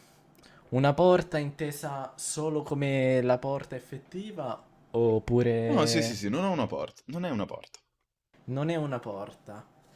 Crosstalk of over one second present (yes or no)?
no